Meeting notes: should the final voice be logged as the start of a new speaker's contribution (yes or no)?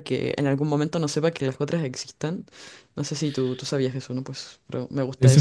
yes